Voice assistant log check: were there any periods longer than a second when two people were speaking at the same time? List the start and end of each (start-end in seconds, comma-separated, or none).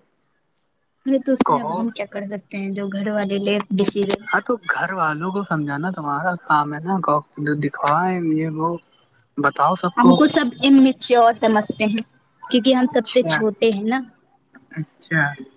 none